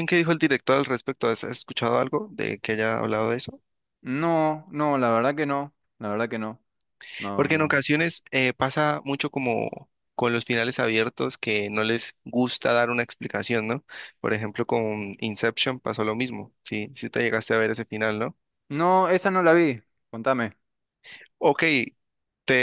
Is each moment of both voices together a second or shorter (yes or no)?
yes